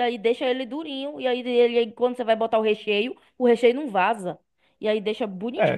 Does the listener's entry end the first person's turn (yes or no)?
yes